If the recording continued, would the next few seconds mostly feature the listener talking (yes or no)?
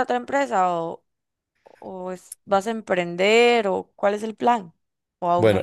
yes